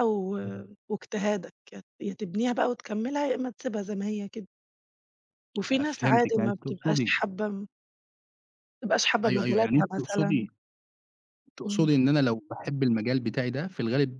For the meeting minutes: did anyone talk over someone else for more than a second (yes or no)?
yes